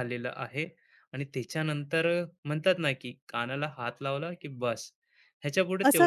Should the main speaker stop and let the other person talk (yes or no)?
yes